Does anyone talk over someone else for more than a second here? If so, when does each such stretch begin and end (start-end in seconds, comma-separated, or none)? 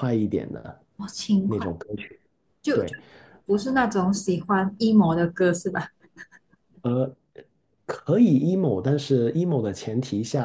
none